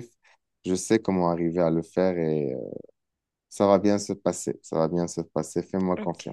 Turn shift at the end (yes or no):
yes